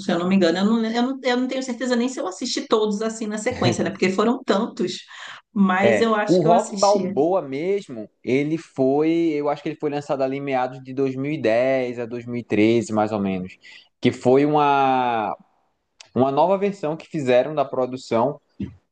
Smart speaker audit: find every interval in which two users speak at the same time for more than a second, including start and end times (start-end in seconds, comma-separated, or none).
5.8-7.1